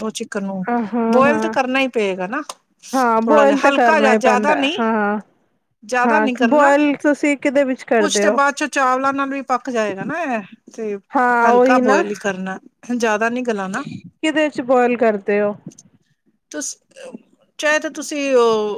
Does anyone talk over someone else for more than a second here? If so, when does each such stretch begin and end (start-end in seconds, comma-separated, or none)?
none